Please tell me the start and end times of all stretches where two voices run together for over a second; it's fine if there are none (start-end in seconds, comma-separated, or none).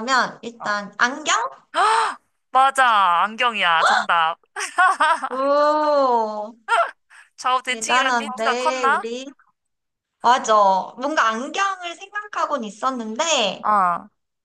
7.7-9.1